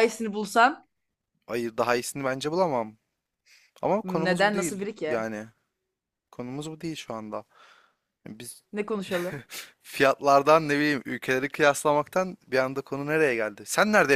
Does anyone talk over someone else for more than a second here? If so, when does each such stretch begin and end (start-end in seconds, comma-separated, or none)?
4.0-5.2